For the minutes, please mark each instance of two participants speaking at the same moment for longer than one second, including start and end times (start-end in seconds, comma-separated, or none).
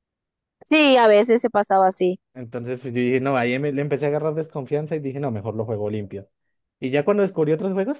none